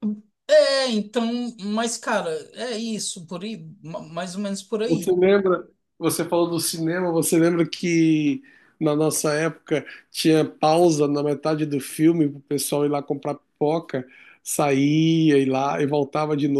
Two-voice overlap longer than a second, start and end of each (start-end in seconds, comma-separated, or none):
none